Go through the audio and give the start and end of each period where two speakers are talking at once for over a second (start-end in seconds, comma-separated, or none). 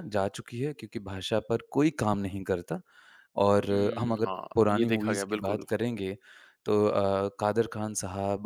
3.7-5.8